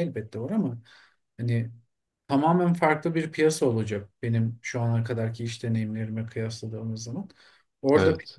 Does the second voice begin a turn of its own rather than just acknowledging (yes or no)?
no